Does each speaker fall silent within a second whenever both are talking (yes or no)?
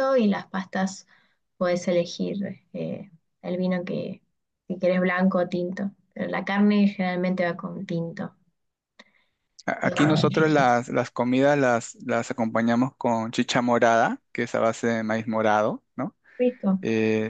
yes